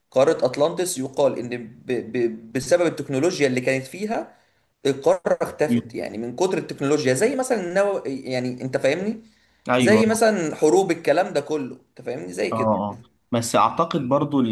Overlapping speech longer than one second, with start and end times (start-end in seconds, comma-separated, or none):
none